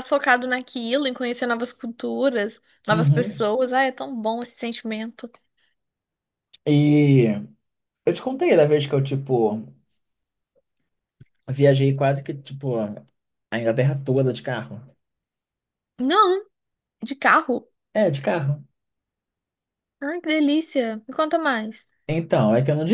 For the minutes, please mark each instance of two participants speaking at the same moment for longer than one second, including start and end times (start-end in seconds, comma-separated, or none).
none